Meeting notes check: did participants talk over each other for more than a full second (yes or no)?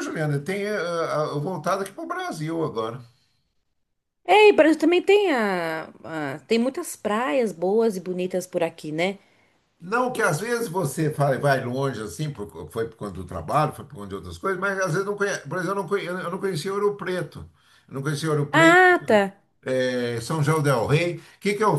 no